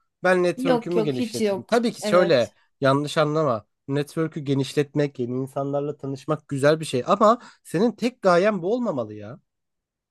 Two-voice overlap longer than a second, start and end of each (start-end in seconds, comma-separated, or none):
0.6-2.5